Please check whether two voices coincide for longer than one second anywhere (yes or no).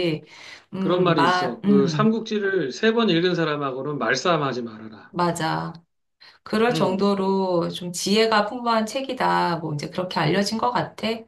yes